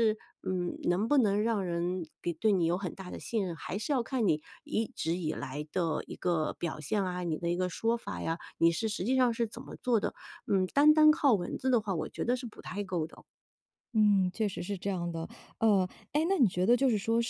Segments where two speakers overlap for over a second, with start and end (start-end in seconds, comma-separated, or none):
none